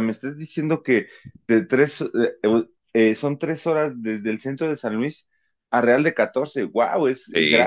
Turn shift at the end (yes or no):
yes